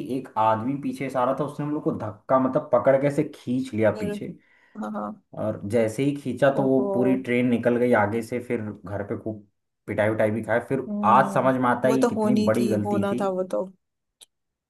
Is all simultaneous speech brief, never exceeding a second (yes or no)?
no